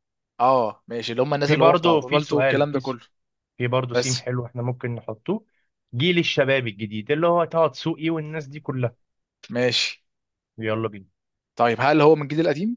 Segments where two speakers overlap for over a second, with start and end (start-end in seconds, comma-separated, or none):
1.4-3.0